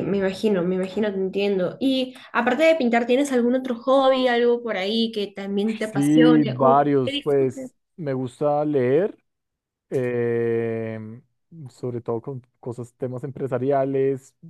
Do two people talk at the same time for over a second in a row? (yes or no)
yes